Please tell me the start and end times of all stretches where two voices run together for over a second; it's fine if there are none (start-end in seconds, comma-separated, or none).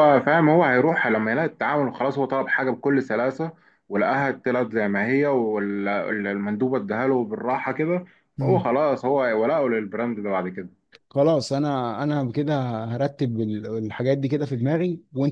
none